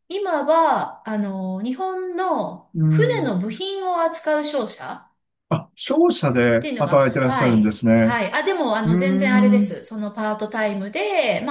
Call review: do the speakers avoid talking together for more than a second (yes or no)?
no